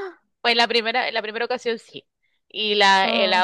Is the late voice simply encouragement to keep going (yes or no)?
yes